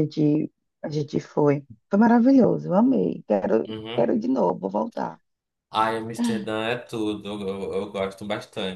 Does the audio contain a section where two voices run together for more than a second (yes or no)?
no